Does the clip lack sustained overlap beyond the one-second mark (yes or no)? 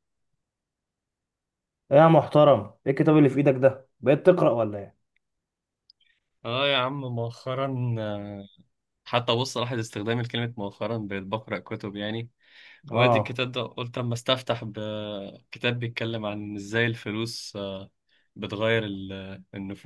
yes